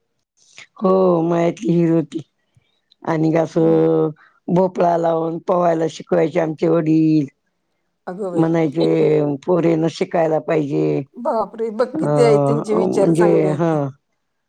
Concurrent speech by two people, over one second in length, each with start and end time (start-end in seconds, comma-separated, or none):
11.9-13.7